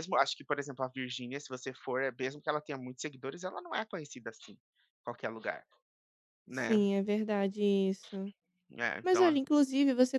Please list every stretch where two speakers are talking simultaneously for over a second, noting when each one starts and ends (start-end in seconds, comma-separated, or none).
none